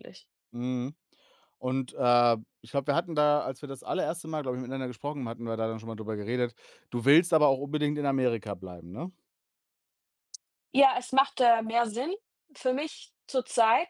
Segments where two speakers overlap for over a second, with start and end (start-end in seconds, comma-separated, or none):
none